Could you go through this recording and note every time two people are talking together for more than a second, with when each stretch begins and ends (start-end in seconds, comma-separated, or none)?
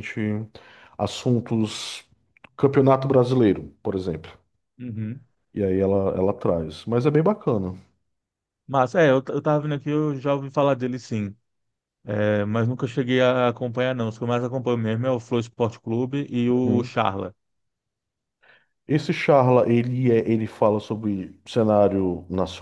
none